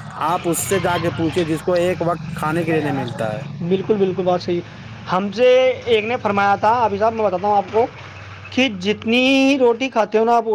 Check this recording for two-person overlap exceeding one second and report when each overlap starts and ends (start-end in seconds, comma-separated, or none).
none